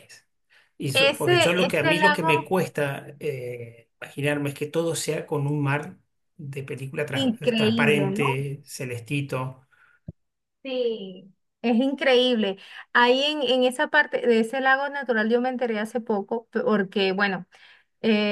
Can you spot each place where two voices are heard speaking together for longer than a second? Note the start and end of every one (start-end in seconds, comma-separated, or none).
0.9-2.5, 7.1-8.3